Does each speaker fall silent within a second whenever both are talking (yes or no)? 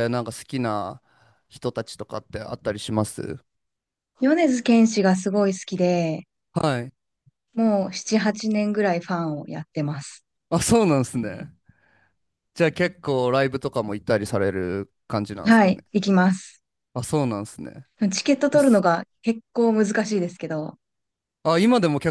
yes